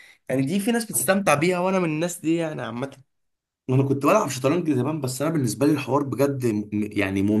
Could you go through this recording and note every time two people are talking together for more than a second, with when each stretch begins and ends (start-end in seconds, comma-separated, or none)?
none